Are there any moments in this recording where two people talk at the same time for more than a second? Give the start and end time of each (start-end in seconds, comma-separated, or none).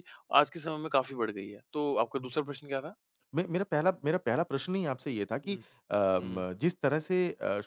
none